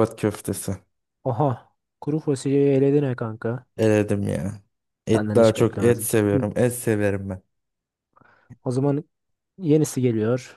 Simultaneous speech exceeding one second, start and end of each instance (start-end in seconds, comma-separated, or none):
5.2-6.5